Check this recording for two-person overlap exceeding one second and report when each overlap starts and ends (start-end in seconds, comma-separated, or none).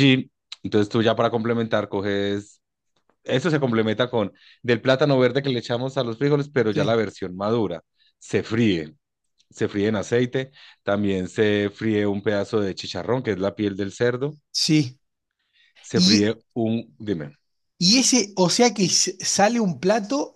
none